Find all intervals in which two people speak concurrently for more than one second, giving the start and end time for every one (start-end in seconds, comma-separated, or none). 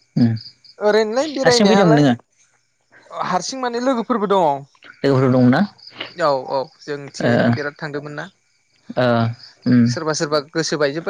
0.8-2.0